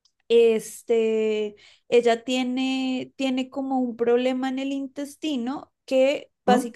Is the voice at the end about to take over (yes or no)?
no